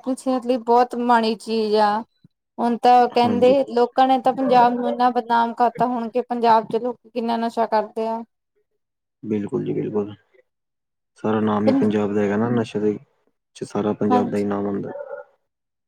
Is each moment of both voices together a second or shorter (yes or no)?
yes